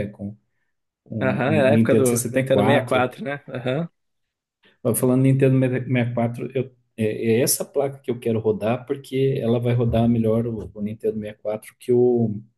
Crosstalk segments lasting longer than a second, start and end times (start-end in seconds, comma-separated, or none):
1.2-3.1